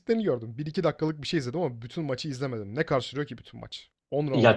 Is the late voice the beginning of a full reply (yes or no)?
yes